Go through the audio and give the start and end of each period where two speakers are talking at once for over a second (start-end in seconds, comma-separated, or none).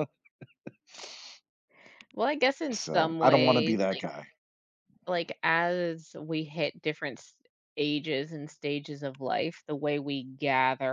2.7-4.0